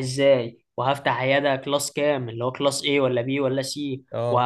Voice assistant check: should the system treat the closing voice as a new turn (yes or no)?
no